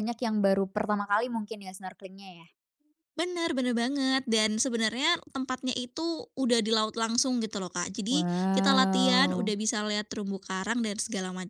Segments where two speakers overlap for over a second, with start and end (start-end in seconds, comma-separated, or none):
8.1-9.5